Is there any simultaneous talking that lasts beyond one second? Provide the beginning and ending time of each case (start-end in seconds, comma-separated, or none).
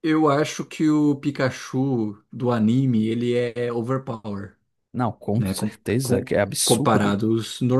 5.3-7.2